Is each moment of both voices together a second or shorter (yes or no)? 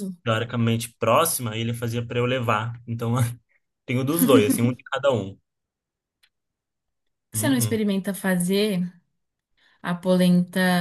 yes